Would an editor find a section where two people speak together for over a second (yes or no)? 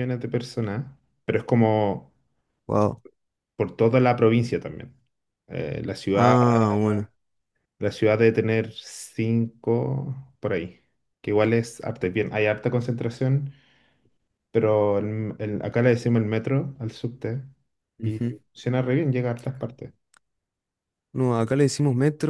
no